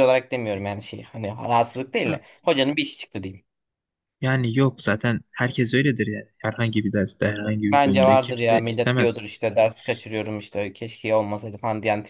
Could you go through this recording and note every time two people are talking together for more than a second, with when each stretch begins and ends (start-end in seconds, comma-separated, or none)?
7.7-9.2